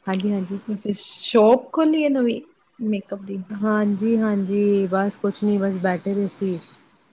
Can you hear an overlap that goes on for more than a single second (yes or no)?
no